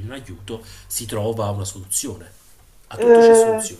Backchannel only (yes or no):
no